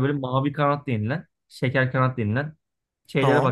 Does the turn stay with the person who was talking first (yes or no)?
yes